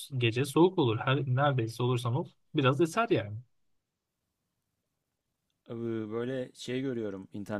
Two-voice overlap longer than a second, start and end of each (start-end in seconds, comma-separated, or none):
none